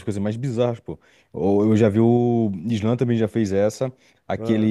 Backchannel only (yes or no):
yes